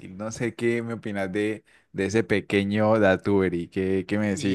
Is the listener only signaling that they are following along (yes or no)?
no